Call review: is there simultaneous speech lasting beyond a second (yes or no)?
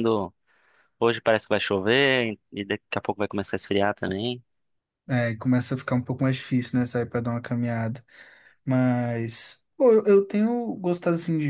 no